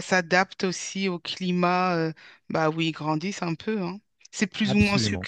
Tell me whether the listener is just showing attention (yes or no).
yes